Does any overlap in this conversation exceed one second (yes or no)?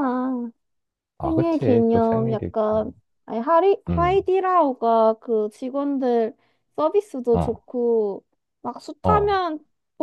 yes